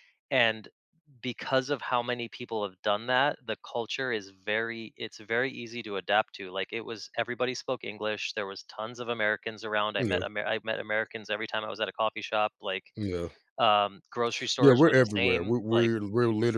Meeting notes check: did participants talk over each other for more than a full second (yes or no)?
yes